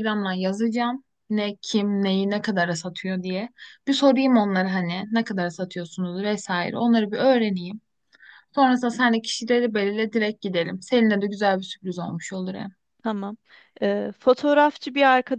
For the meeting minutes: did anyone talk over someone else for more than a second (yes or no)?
no